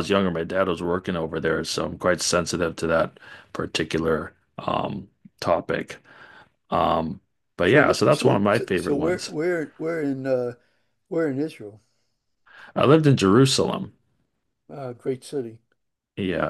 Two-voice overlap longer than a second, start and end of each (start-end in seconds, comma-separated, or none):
7.6-9.3